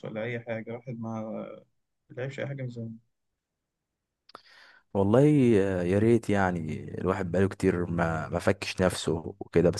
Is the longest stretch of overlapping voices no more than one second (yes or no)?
yes